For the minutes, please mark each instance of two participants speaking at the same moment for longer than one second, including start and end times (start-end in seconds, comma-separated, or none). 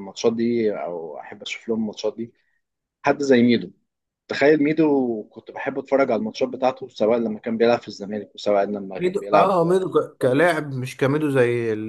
9.0-10.5